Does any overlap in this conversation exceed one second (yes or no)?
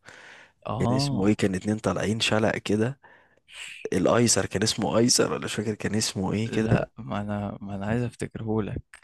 no